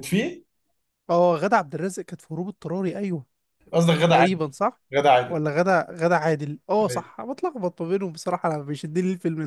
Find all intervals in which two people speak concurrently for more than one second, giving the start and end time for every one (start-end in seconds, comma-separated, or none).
none